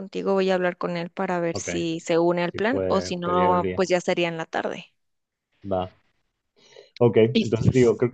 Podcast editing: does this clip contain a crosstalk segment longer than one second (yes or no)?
yes